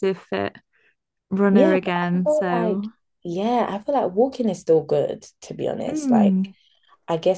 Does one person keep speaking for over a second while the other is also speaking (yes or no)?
yes